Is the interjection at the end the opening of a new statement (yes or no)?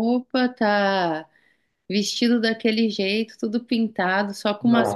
yes